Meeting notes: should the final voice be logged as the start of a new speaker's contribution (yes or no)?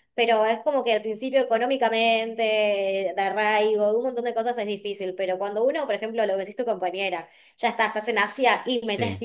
no